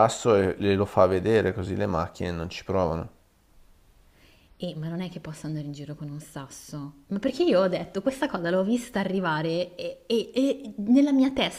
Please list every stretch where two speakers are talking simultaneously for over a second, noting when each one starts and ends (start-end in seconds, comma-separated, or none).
none